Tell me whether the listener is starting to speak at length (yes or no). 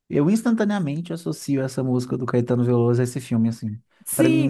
yes